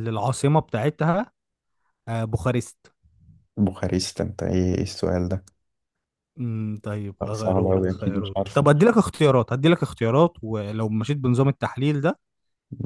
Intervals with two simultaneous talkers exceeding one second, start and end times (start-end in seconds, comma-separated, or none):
7.2-8.7